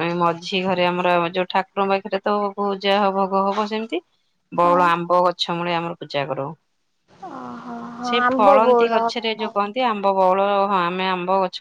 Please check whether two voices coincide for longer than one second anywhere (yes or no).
yes